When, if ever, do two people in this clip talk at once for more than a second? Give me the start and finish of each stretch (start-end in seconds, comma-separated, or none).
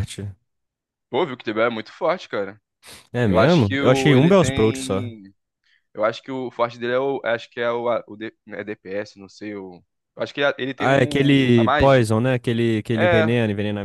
3.2-5.1, 10.8-12.1